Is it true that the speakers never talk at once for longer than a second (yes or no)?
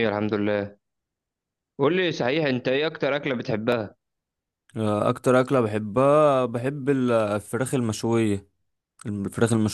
yes